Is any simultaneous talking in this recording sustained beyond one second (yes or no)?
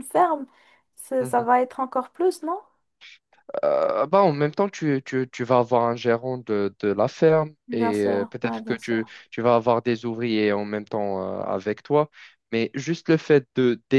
yes